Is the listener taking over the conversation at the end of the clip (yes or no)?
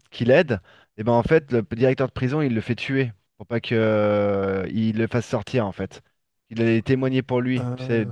no